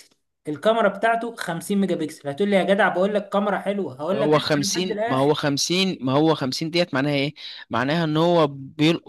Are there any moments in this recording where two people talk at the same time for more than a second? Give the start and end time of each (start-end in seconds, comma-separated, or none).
4.1-5.4